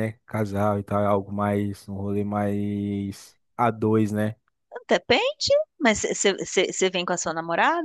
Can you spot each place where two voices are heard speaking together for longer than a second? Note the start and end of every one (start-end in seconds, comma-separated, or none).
none